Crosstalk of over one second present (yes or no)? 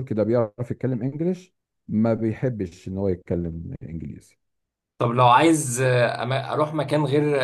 no